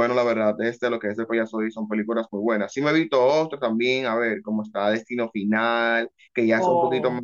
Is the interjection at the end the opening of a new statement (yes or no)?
no